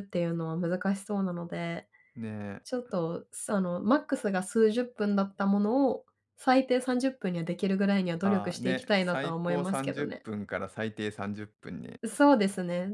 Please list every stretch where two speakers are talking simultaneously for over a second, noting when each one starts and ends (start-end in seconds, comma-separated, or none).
8.2-10.2